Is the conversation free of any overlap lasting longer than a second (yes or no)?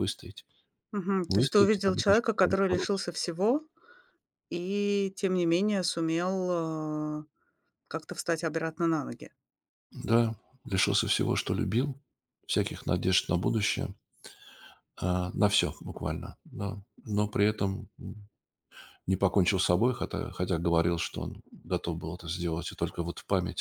no